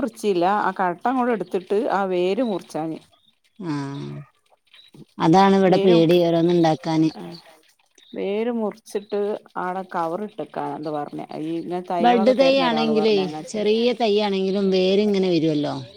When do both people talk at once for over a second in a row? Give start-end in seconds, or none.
none